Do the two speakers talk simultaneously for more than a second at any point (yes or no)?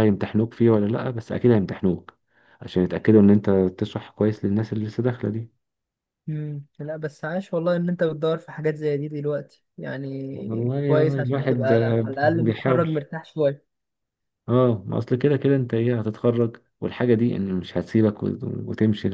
yes